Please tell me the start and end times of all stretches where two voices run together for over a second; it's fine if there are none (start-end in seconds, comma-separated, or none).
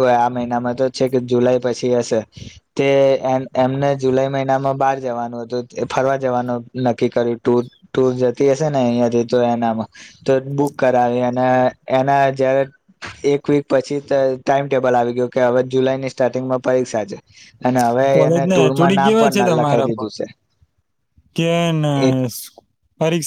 18.1-20.1